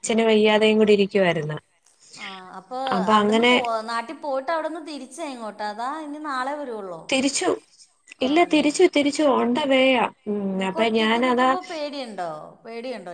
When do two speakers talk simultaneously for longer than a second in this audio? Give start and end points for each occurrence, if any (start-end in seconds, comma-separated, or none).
none